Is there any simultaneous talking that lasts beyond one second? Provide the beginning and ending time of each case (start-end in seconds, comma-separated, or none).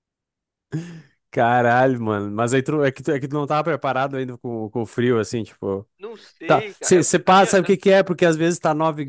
6.5-7.7